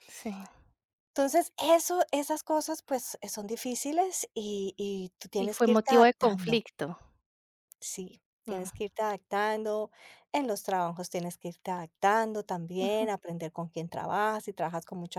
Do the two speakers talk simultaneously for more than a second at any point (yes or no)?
yes